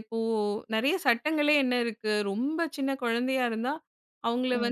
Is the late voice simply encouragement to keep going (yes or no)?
yes